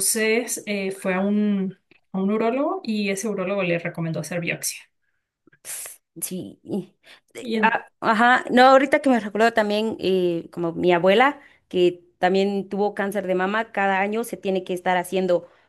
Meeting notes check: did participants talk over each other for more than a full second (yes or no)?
no